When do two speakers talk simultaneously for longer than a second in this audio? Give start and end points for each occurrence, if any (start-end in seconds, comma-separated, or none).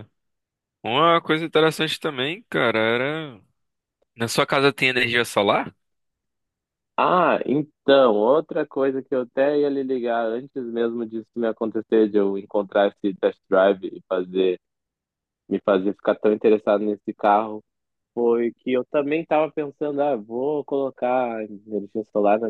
none